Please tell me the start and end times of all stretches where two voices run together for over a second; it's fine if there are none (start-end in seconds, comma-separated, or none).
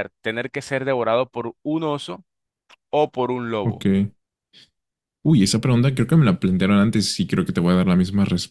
none